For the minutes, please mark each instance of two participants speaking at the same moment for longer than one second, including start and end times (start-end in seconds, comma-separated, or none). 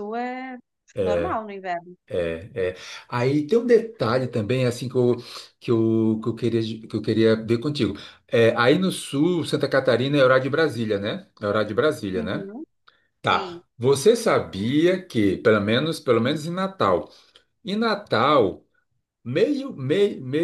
none